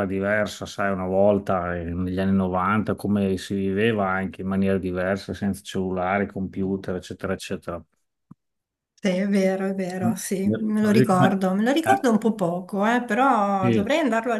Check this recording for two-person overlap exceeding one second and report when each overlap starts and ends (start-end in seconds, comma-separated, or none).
none